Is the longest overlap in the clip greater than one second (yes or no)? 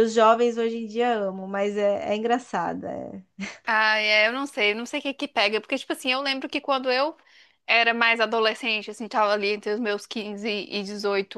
no